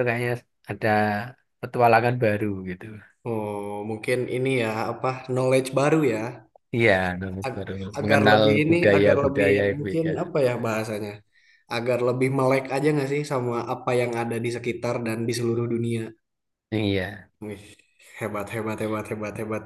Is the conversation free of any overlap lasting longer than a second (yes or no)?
no